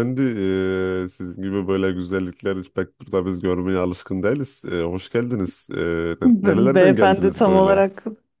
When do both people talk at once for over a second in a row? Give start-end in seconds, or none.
6.2-7.8